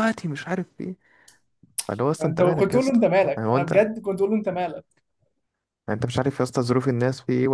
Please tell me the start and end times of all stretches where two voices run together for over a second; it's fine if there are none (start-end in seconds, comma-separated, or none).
2.2-3.9